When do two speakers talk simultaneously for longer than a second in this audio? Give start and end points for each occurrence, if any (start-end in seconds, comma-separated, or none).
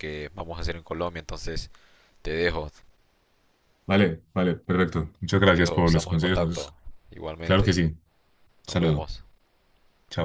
5.4-6.7